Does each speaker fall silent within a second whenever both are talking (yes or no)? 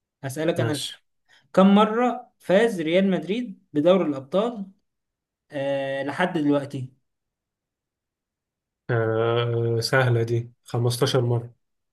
yes